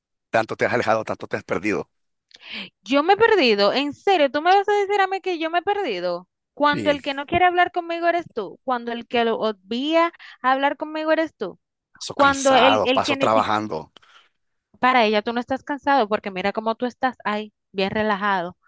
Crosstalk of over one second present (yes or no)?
yes